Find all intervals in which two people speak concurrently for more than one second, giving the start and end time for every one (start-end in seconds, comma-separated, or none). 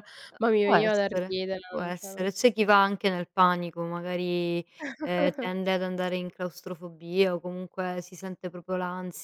0.6-2.1